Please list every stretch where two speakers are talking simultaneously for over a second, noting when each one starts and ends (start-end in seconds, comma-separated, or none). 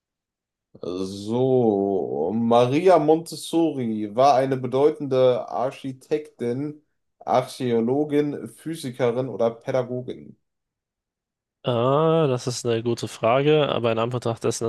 none